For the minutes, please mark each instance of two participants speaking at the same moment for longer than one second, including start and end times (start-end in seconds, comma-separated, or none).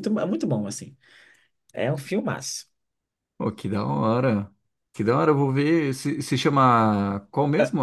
none